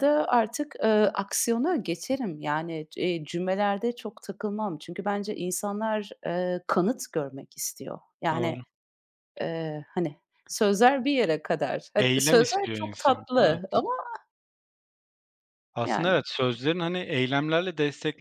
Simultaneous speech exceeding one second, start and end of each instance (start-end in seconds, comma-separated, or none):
12.0-13.6